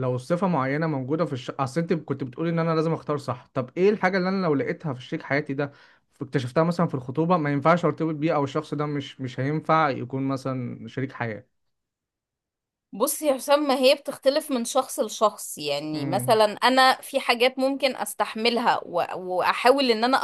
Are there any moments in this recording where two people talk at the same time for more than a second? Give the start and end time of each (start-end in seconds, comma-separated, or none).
none